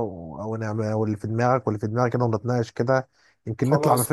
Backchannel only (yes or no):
no